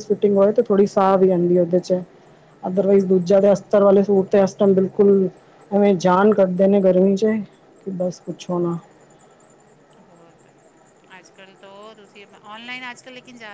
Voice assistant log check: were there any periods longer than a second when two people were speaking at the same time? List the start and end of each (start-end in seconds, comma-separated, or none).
none